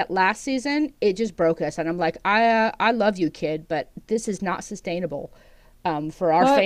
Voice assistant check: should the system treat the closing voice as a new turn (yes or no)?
yes